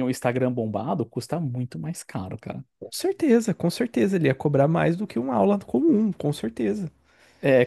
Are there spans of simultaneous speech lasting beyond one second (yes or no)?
no